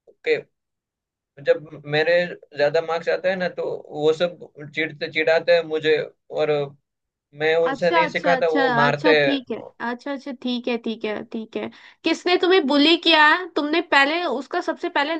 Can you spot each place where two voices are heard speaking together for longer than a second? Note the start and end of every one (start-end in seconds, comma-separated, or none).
7.7-9.1